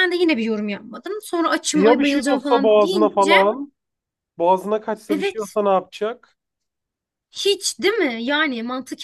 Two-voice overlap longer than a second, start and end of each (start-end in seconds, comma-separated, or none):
1.7-3.3